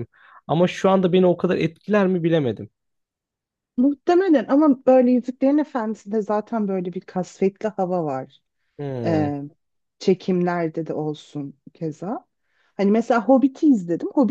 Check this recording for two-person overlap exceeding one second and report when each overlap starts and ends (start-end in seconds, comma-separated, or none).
none